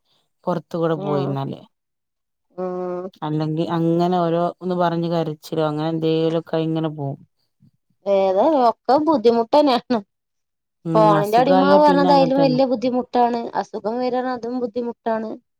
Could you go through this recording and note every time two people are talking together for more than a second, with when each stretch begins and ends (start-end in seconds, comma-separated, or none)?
10.9-12.6